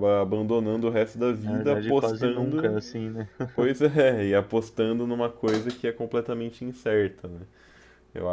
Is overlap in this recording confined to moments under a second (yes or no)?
no